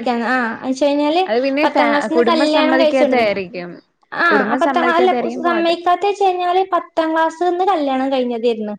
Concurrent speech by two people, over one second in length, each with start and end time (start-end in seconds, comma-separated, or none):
1.6-3.4